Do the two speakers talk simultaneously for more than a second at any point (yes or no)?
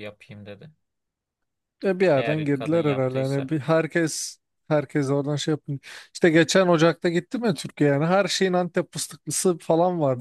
yes